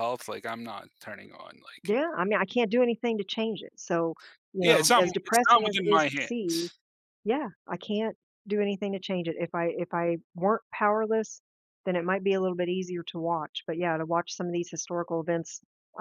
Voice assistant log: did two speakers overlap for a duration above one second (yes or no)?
yes